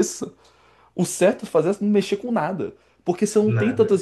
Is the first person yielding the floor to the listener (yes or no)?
no